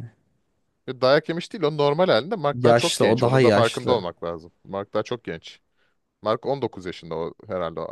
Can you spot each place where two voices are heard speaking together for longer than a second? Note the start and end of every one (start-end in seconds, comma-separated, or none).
2.5-4.0